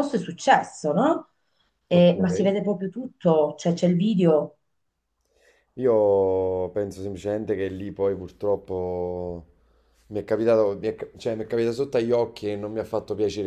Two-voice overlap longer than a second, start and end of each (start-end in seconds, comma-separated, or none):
none